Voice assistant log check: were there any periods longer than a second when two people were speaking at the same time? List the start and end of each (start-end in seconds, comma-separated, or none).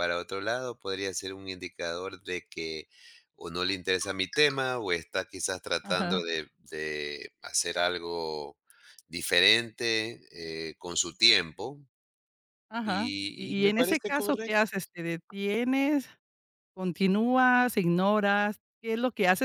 12.8-14.7